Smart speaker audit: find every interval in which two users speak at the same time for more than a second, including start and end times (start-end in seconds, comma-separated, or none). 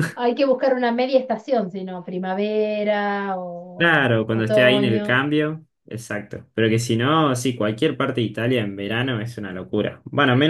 3.8-5.2